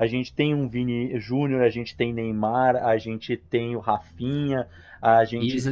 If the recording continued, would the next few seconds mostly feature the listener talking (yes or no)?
yes